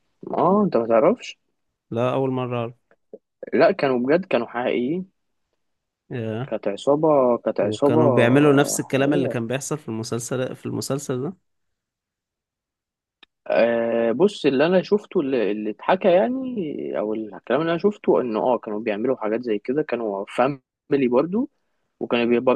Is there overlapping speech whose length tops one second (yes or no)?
no